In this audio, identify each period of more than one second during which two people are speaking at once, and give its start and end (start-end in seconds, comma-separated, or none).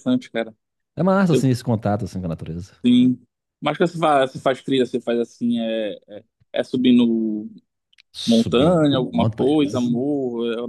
8.3-9.9